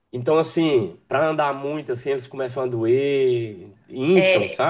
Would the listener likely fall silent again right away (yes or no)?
no